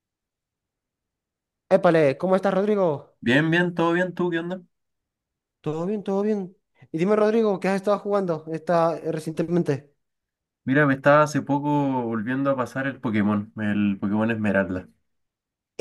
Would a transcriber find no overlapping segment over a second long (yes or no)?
yes